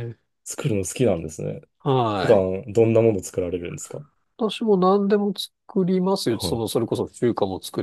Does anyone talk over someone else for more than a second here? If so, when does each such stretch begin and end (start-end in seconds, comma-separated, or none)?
none